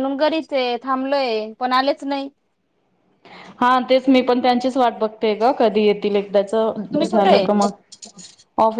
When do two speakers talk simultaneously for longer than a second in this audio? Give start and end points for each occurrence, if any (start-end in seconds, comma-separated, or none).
none